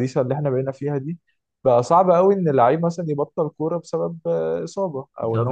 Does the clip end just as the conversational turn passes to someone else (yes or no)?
no